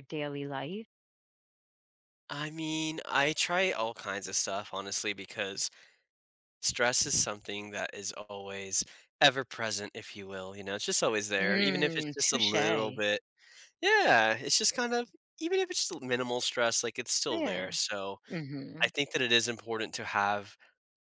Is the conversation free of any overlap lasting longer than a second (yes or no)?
no